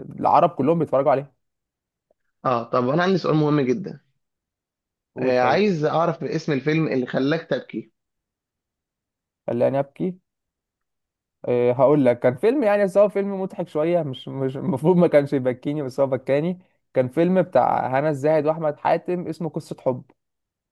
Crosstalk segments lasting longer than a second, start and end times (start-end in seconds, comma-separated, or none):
none